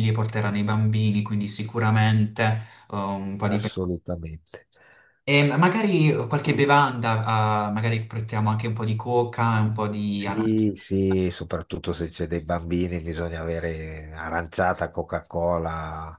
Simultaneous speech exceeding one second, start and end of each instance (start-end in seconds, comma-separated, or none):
none